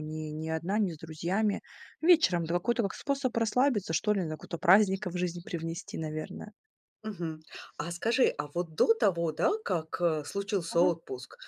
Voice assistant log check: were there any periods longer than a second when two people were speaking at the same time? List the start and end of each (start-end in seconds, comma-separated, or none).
none